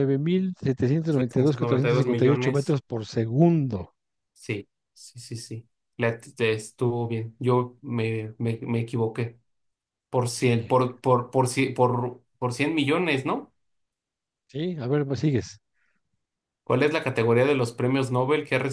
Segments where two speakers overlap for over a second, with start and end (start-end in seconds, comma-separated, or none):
1.1-2.8